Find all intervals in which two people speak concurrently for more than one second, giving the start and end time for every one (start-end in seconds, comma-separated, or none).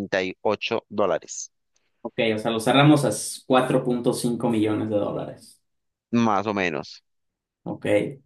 none